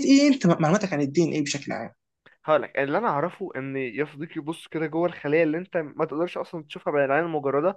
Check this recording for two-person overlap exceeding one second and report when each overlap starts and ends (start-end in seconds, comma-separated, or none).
none